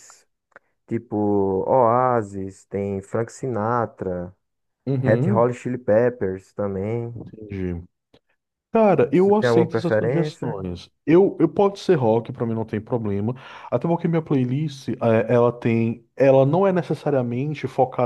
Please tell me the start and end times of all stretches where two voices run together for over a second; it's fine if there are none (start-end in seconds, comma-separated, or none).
9.1-10.6